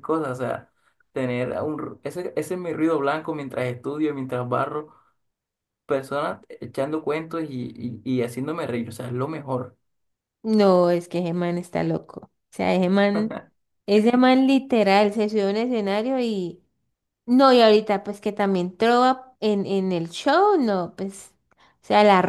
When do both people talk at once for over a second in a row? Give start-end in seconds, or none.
none